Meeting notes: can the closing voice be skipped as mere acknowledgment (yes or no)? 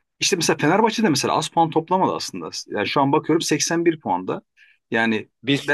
yes